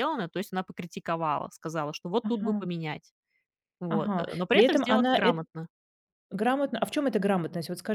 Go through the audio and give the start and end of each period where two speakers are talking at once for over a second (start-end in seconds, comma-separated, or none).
3.9-5.4